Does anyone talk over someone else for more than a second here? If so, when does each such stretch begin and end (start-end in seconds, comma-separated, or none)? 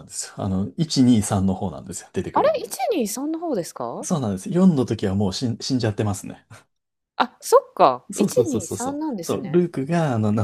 8.1-9.6